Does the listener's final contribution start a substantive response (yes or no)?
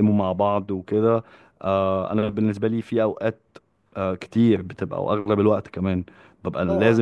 no